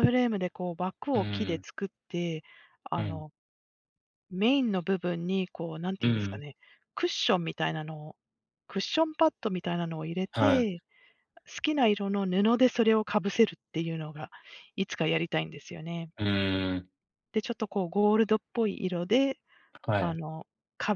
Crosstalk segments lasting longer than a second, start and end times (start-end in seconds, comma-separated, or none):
none